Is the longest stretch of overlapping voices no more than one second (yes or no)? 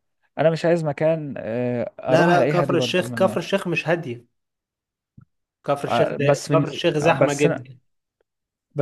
no